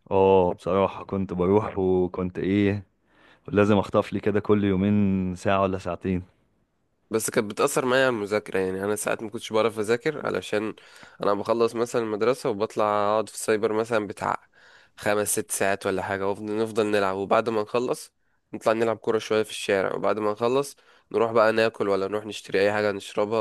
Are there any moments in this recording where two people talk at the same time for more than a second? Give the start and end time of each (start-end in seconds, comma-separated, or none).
none